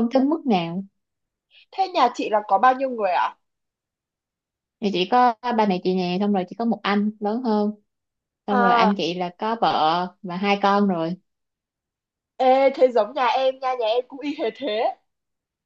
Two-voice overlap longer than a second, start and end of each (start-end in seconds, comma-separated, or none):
none